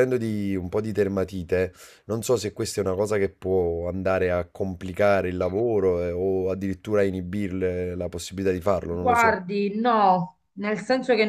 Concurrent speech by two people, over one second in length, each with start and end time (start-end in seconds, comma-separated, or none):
none